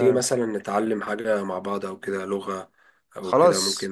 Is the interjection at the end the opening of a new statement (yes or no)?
yes